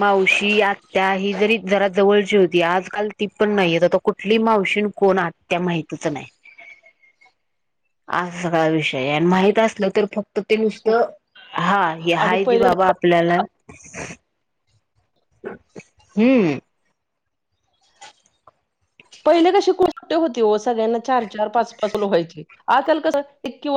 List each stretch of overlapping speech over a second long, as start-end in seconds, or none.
none